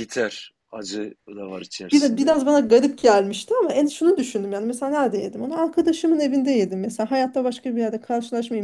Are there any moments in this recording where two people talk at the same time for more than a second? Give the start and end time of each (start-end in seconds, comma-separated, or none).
none